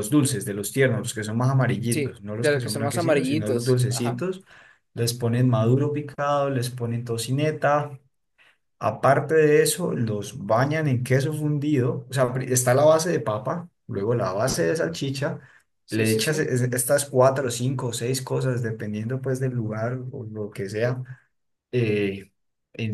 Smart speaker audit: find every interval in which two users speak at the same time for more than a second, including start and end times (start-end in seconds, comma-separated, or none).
1.9-4.2